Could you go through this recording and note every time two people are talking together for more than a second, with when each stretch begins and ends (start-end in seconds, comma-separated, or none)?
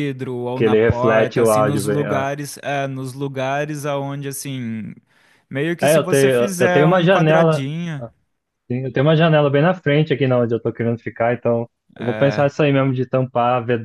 0.6-2.3, 5.8-8.0